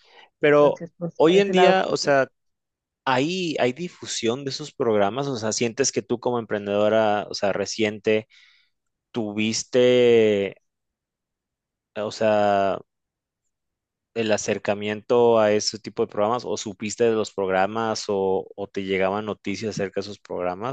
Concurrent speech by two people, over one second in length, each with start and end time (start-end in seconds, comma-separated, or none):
0.6-2.1